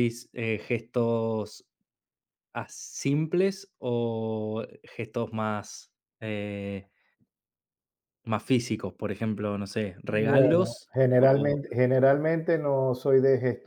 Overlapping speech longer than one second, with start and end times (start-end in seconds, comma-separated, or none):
10.1-11.6